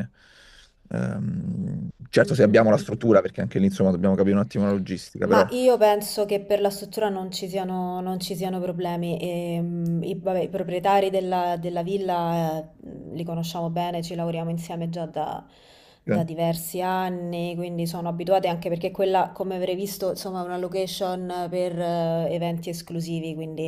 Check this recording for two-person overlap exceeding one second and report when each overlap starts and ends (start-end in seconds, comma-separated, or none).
none